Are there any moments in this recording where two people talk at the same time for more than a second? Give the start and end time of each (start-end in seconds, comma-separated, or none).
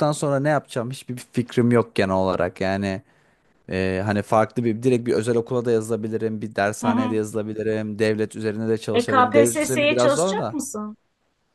9.0-10.6